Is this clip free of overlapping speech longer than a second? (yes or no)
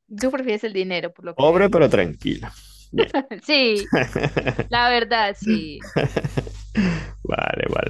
yes